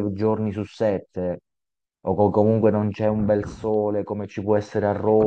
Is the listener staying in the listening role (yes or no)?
no